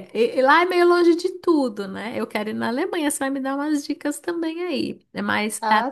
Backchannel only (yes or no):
yes